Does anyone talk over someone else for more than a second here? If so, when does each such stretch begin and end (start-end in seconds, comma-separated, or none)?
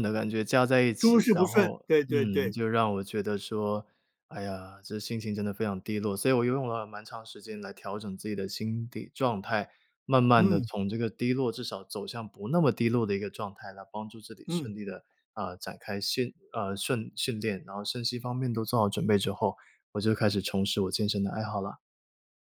1.0-2.6